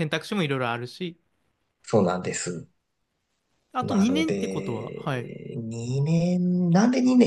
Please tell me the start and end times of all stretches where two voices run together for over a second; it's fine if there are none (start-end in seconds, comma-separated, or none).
3.8-5.3